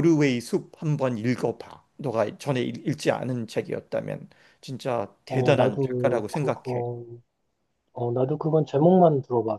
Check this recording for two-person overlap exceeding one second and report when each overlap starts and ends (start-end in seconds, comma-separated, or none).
5.3-6.8